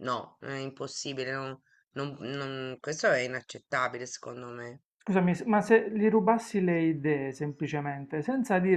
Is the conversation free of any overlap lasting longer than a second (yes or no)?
yes